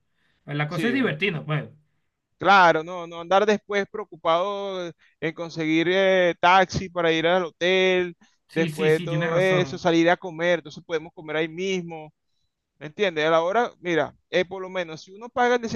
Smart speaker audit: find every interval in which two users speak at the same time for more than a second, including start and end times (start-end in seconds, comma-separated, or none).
8.5-9.8